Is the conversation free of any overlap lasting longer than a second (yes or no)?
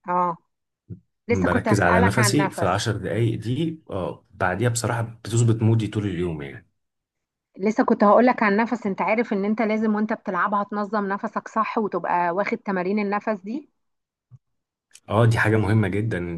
no